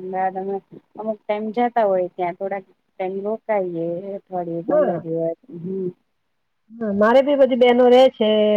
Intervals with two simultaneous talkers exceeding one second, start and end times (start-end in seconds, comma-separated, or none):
none